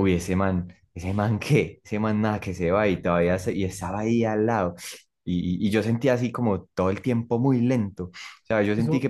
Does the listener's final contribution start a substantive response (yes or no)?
no